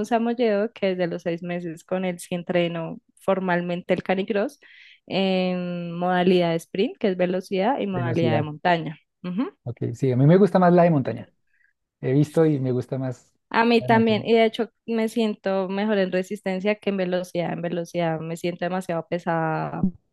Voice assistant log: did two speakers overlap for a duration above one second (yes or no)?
no